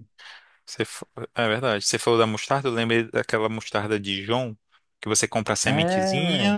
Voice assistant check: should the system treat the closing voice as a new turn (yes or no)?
no